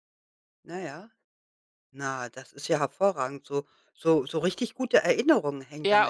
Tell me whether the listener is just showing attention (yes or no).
no